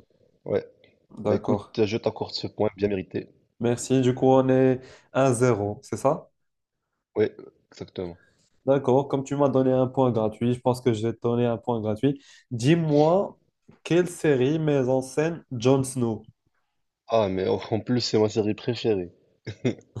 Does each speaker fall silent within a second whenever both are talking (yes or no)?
yes